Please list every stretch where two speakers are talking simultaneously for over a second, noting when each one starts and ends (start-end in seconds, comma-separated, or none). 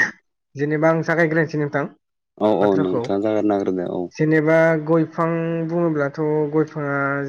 none